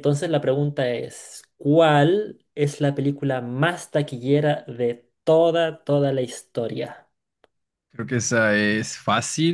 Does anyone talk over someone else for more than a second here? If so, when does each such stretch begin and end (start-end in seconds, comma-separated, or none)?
none